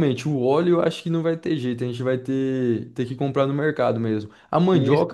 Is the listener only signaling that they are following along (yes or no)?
yes